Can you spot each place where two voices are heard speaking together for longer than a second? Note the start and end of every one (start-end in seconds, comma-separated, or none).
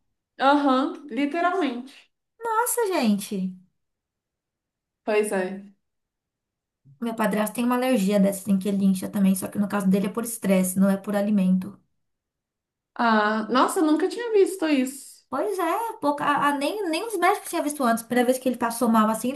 none